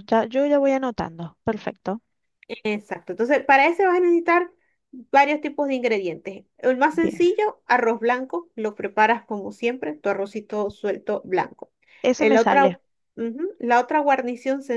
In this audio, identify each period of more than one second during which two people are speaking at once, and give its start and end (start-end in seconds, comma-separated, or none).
none